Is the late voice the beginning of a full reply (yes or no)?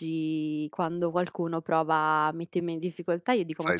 no